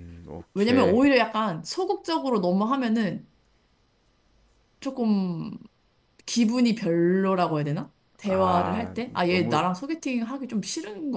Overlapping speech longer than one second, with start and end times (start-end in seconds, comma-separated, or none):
8.2-9.6